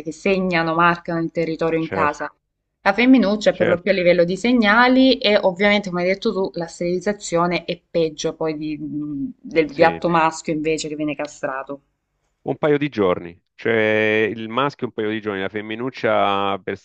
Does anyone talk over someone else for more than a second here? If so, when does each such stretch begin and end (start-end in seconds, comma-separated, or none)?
none